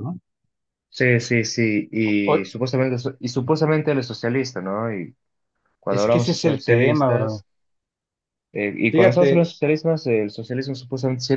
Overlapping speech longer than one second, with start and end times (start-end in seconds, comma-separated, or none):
5.9-7.4